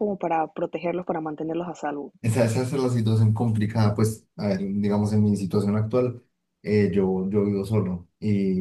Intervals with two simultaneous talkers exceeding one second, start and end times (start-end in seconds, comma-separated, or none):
none